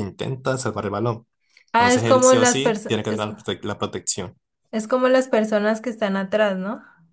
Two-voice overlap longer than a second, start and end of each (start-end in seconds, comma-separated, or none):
1.7-3.3